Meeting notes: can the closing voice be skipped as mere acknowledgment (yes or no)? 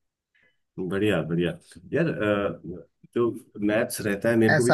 yes